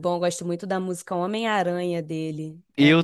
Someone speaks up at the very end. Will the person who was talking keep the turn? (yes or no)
no